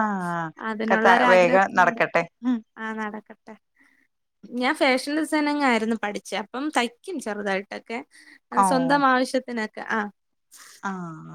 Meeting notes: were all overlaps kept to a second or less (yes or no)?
yes